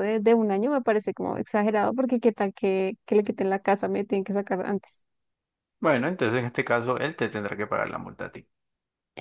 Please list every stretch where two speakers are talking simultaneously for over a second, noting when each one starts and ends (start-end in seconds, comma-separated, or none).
none